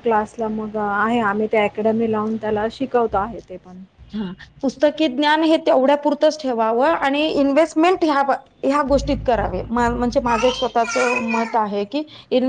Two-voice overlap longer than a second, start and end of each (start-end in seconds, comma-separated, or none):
none